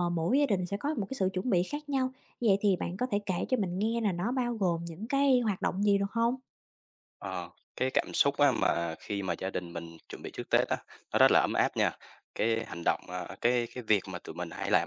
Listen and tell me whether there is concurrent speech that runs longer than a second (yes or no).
no